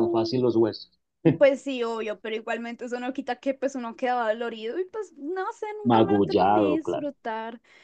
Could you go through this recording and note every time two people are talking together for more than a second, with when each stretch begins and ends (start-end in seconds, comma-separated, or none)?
5.8-7.1